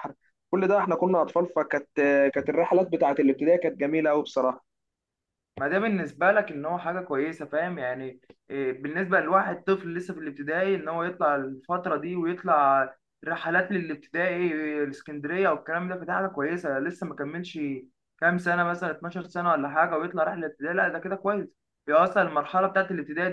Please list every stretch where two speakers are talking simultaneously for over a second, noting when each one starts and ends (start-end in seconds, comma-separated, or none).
none